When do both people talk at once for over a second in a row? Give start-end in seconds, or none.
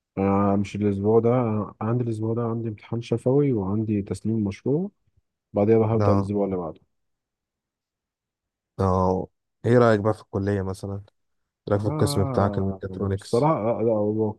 11.8-13.5